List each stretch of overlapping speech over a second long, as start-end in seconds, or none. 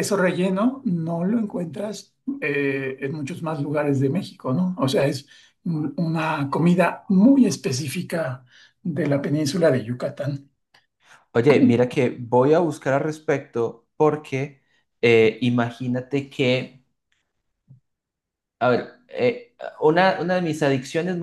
none